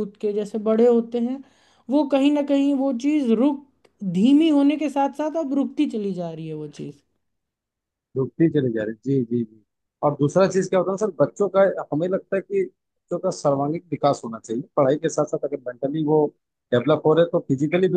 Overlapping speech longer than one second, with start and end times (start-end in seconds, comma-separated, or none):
none